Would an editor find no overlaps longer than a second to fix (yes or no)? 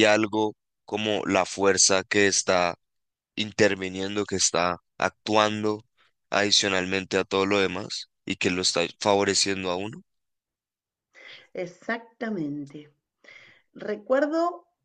yes